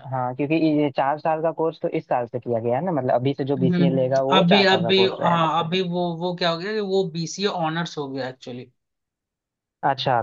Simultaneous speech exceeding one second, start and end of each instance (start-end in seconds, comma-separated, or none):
3.6-5.5